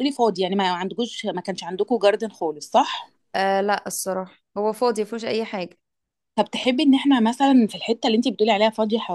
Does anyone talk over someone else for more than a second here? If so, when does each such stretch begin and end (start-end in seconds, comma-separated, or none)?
none